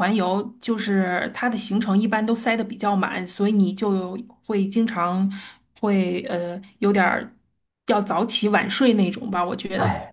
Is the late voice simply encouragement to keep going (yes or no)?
no